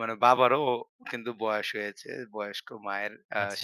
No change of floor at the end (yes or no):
yes